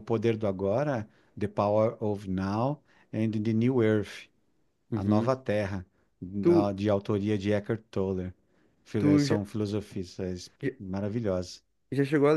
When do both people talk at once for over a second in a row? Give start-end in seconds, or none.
none